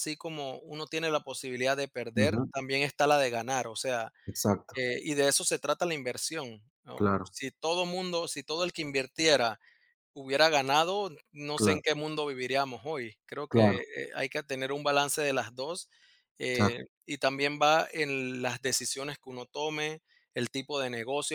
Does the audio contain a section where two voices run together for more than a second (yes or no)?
no